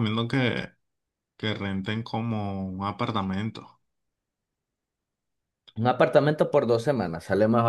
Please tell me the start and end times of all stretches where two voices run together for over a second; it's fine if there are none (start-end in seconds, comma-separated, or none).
none